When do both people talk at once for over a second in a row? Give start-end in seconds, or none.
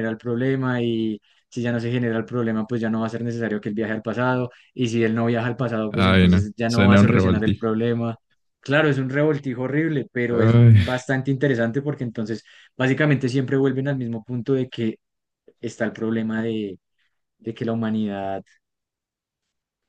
5.9-7.6